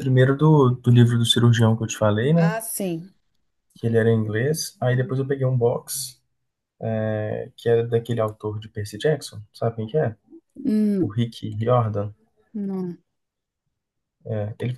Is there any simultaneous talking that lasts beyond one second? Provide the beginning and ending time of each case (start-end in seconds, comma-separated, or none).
none